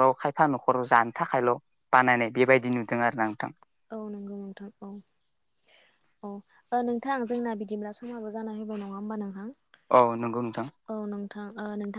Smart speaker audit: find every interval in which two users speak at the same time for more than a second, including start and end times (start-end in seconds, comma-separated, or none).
none